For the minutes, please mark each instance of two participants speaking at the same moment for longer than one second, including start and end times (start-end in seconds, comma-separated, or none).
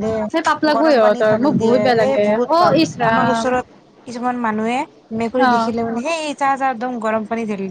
0.8-3.4